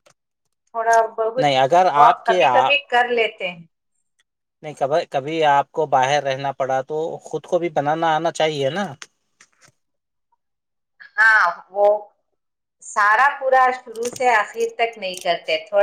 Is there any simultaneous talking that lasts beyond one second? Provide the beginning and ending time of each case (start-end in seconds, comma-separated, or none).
1.4-2.8